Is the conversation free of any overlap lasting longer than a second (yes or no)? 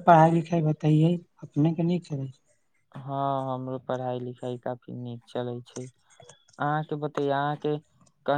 yes